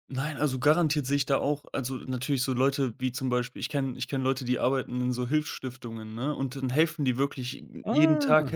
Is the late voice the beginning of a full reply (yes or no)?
no